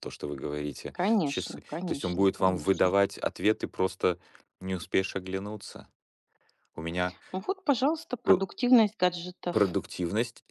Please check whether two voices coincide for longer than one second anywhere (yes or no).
yes